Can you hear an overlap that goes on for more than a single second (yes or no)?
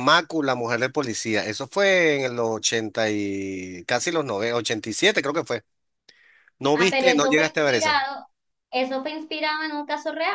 yes